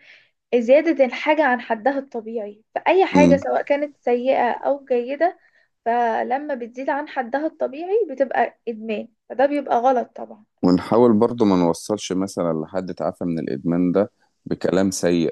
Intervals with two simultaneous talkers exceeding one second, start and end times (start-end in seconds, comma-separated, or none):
none